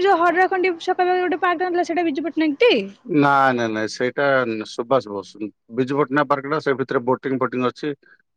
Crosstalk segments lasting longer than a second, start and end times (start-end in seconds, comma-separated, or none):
none